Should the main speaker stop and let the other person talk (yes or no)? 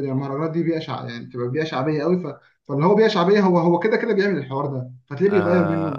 yes